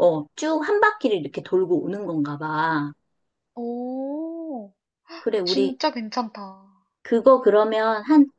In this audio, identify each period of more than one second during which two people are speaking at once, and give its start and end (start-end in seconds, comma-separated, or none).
none